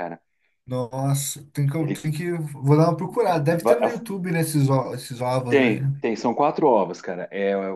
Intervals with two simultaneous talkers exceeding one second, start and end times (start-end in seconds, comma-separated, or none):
none